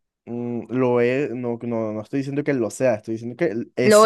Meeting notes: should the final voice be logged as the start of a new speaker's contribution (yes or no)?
no